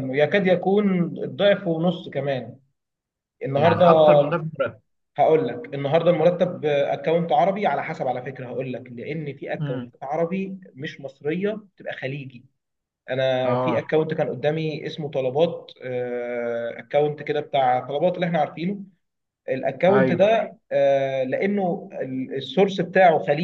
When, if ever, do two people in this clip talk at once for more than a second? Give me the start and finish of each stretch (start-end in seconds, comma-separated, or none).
none